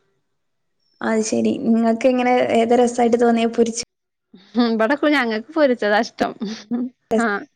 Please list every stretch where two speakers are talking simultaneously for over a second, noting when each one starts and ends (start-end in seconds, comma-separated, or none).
none